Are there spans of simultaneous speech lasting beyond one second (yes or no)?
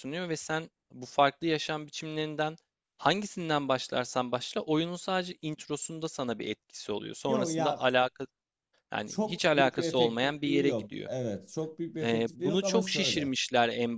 yes